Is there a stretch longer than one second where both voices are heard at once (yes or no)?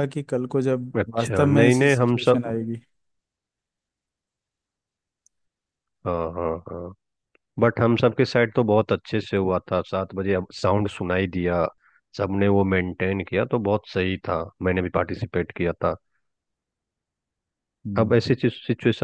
yes